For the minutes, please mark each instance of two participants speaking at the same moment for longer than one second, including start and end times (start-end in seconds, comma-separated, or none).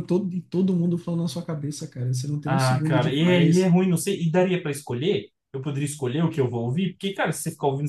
2.4-3.7